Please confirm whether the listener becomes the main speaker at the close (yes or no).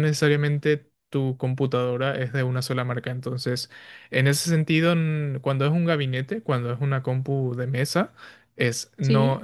no